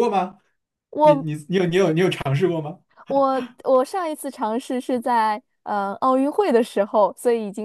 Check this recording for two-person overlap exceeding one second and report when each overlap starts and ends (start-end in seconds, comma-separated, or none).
none